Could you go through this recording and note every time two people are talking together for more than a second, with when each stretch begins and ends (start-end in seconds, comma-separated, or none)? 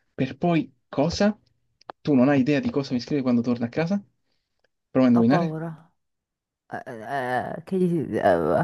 none